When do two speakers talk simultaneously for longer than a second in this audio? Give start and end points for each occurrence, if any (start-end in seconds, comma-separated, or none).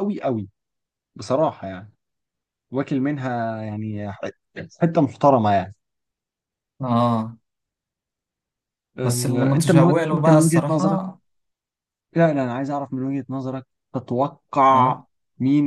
9.0-11.0